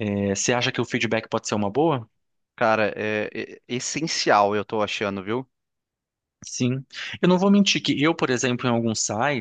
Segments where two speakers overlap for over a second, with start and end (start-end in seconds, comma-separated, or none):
none